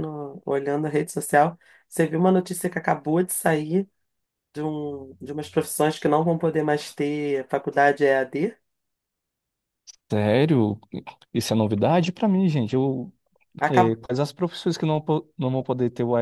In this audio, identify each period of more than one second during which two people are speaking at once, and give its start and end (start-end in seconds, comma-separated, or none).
none